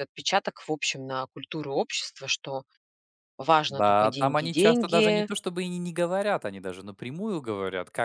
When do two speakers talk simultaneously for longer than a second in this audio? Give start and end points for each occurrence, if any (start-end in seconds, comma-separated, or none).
3.7-5.3